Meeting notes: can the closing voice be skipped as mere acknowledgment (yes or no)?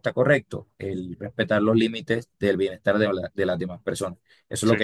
yes